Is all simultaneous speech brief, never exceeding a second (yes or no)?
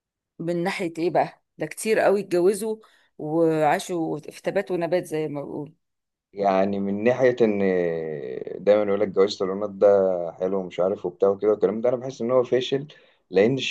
yes